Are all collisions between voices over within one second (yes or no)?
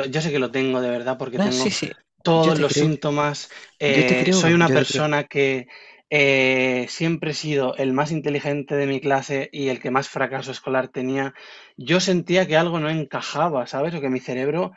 no